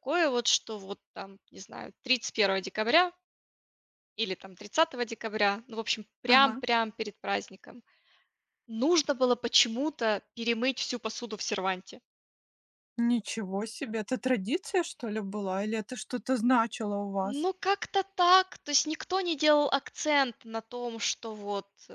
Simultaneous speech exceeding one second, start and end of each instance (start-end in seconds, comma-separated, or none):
none